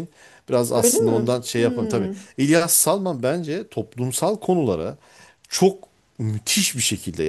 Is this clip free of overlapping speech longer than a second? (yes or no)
no